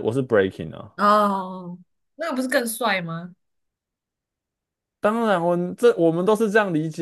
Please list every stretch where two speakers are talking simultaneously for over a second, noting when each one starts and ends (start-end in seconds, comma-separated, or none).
none